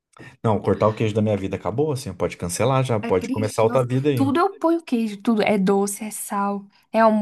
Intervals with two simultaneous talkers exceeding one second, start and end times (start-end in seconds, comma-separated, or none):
3.0-4.3